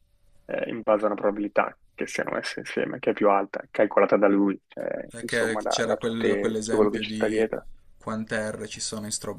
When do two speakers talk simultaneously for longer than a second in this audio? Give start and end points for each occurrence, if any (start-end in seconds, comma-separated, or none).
5.1-7.5